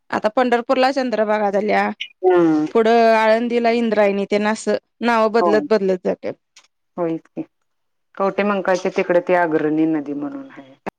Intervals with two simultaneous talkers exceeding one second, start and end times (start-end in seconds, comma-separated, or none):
none